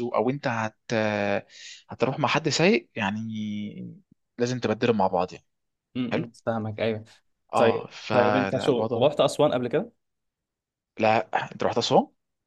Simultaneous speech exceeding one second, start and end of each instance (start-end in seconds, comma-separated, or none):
7.6-9.1